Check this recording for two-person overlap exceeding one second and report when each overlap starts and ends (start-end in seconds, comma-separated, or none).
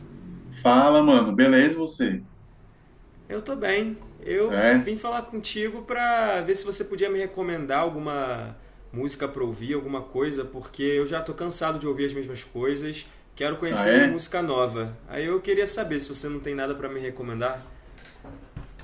none